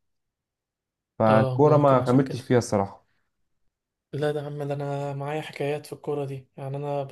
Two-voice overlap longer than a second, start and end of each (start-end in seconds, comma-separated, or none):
1.3-2.5